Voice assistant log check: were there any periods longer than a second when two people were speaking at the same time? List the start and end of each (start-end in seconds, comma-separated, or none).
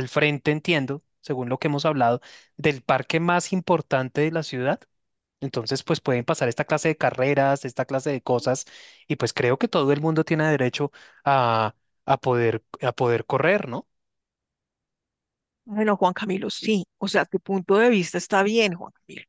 none